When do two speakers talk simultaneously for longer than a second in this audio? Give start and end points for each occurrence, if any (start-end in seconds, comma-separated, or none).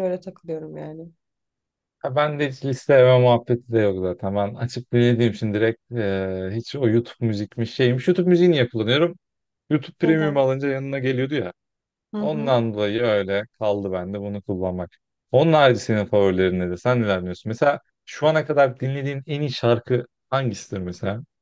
none